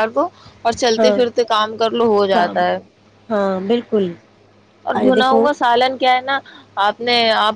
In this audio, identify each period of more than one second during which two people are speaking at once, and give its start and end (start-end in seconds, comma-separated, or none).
none